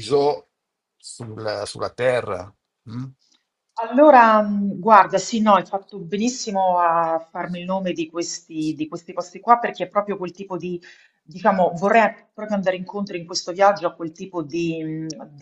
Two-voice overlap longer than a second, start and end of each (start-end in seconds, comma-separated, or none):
none